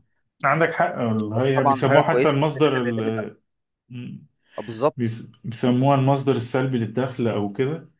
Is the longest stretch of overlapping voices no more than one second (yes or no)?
no